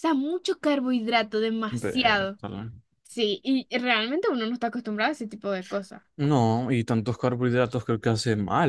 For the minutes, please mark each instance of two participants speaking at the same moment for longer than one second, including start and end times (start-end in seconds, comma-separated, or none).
none